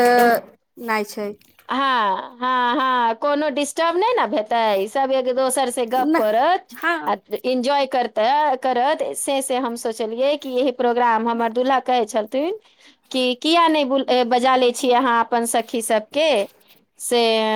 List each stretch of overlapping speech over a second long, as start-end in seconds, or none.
none